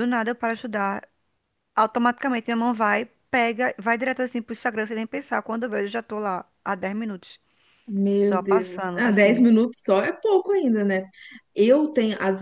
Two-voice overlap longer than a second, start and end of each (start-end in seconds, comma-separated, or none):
8.2-9.4